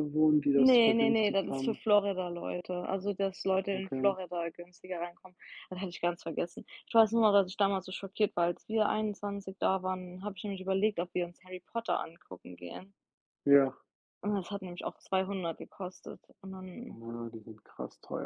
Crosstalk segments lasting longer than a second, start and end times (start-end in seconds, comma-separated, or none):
0.6-1.8